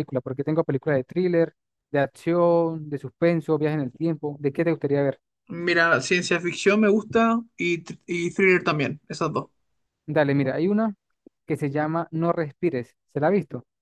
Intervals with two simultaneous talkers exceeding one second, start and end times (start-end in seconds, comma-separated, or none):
none